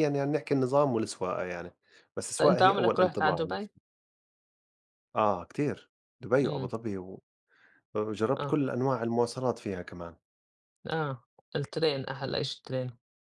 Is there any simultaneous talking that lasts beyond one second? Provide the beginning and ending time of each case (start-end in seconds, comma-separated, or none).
2.4-3.7